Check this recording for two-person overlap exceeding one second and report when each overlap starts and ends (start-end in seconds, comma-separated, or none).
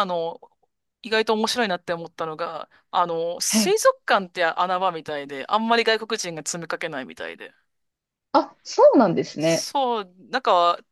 none